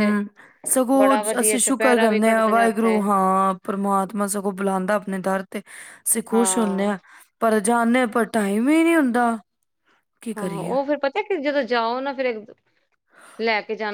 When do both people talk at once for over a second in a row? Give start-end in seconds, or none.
1.3-3.0